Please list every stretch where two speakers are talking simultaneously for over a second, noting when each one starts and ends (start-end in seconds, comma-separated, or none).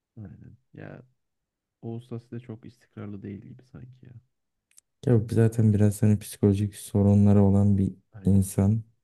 none